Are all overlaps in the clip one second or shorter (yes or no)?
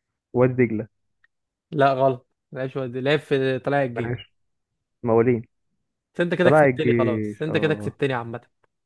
no